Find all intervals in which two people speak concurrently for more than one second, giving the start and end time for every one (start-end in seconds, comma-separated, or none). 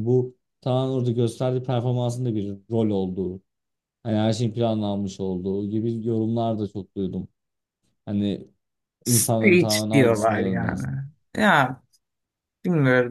9.1-10.8